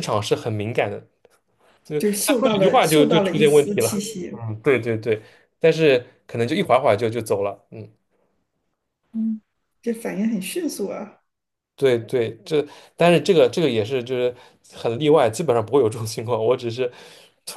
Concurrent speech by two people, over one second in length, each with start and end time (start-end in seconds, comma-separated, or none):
2.0-4.3